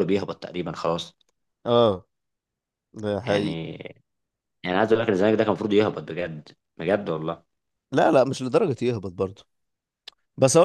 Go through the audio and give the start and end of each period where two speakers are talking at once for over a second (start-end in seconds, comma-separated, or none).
none